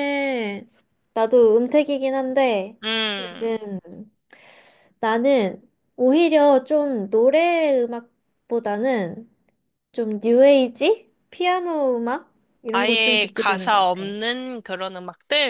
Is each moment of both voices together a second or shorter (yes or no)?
no